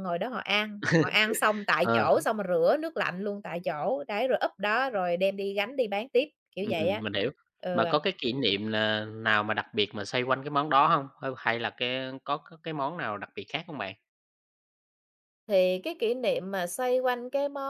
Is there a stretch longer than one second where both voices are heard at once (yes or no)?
no